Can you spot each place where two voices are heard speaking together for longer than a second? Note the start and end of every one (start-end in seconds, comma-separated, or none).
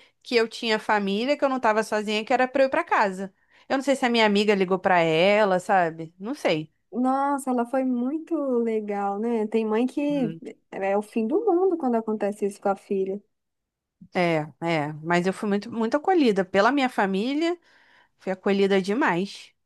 none